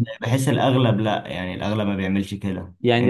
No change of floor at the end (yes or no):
no